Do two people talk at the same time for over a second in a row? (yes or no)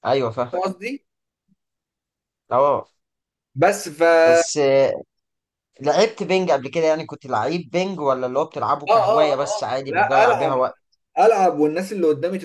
yes